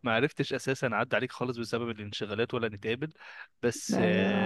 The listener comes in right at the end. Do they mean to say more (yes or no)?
no